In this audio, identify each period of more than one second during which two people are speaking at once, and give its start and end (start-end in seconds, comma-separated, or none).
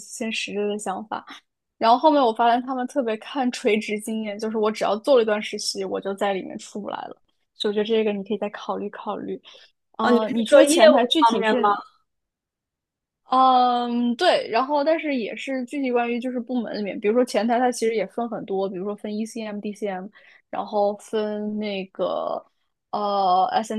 10.0-11.7